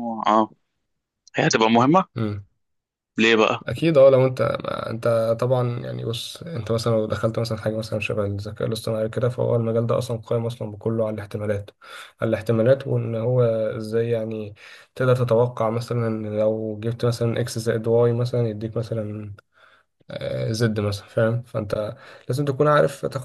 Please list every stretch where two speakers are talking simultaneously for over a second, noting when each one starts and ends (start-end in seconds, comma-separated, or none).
none